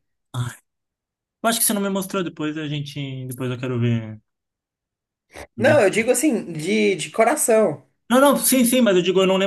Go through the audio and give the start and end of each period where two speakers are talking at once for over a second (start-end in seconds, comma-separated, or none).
none